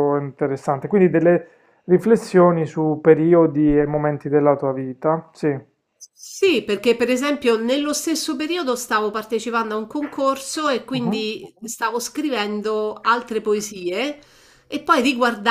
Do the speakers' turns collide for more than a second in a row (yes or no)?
no